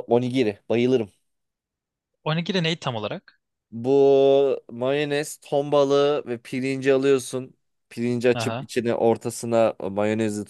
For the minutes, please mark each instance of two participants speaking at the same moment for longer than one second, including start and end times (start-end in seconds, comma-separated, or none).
none